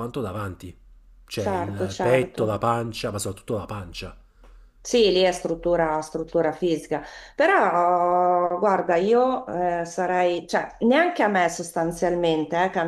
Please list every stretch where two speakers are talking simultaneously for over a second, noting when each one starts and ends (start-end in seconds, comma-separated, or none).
1.3-2.6